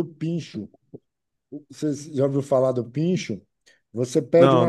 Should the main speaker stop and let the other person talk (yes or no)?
no